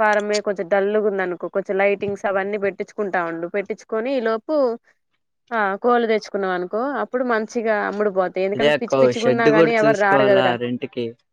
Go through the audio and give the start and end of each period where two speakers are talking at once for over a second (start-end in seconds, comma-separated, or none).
8.5-10.5